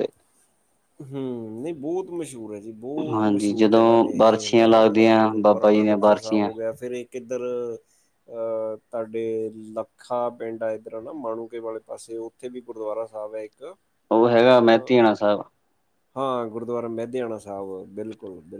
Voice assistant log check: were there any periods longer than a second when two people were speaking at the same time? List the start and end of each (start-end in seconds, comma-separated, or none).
3.1-6.5